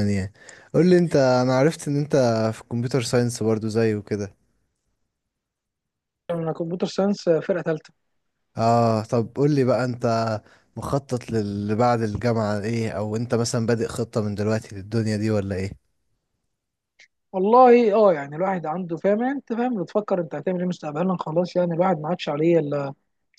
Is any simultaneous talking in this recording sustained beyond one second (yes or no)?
no